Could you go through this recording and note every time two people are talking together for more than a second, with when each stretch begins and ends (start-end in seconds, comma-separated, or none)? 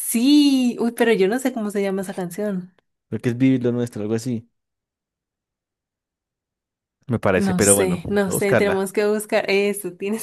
7.4-8.9